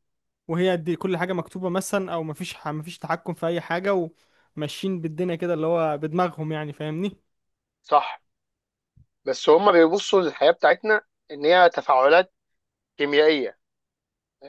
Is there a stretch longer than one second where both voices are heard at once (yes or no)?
no